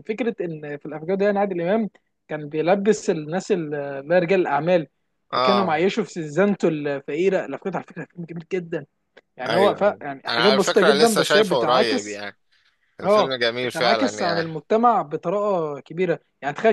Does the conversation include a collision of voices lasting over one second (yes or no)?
yes